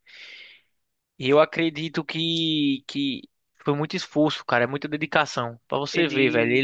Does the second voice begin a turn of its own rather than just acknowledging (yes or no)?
no